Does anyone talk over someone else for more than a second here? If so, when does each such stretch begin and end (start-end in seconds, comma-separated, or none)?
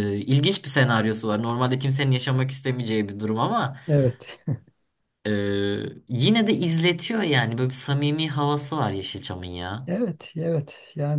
none